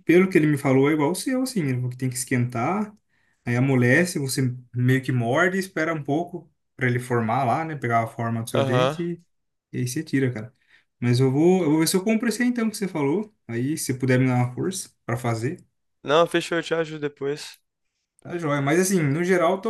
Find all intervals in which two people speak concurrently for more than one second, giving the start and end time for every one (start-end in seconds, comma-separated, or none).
none